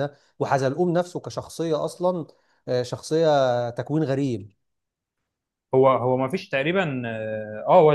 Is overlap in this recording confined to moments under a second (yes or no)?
yes